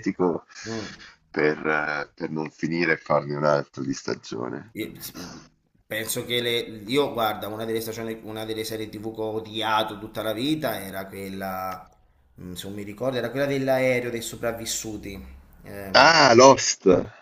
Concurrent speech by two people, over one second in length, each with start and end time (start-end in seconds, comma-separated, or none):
none